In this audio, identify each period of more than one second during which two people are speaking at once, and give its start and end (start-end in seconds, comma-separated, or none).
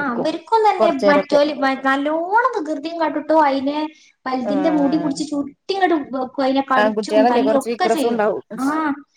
6.8-8.2